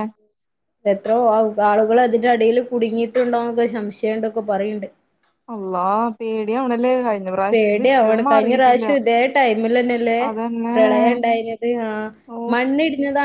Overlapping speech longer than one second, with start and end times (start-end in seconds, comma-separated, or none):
7.5-8.8